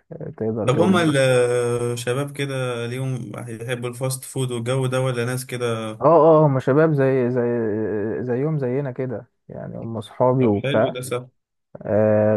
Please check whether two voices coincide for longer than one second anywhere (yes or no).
no